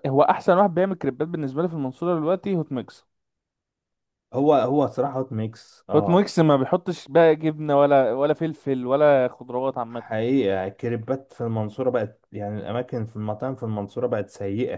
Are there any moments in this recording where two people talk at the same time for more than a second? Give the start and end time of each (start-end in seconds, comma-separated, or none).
none